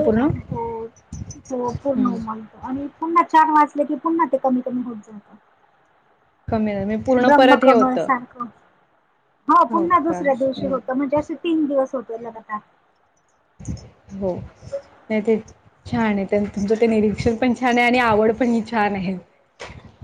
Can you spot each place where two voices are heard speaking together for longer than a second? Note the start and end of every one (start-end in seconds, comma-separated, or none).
none